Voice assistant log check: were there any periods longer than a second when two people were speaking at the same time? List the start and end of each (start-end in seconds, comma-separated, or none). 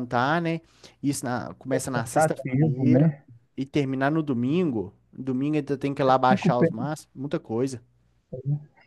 1.9-3.1